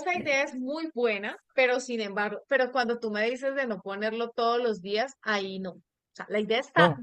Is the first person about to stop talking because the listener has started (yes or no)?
no